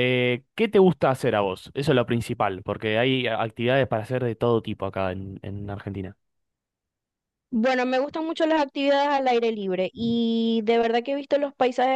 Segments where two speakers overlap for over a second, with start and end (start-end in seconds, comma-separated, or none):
none